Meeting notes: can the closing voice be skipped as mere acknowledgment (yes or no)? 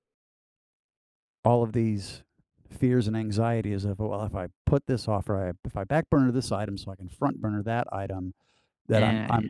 yes